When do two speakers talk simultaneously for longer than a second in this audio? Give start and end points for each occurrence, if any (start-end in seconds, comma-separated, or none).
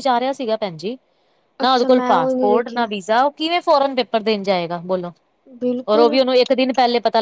1.6-2.9